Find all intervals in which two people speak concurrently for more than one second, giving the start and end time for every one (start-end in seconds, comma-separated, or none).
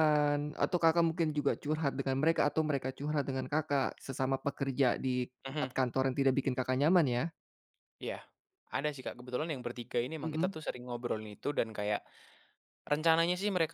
none